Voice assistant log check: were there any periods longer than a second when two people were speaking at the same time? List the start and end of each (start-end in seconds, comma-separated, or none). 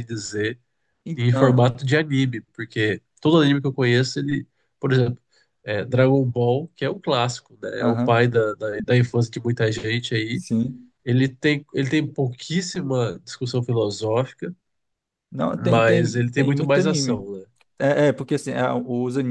15.6-17.2